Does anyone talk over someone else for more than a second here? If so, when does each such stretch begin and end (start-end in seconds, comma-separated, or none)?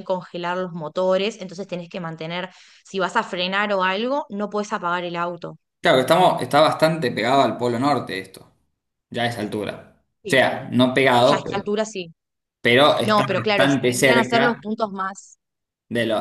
13.0-14.7